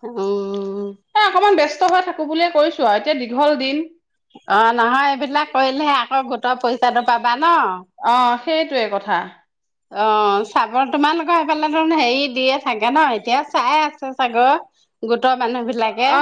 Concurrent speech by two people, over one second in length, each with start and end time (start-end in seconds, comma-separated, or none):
none